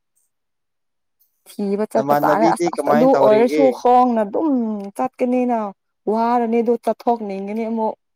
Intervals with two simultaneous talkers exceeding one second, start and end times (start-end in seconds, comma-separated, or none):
1.9-3.6